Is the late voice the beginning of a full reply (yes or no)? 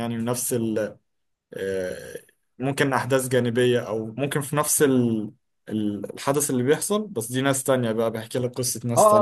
yes